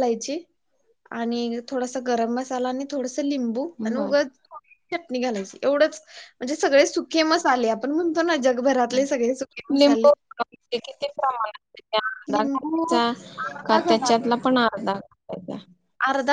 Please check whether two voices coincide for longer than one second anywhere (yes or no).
yes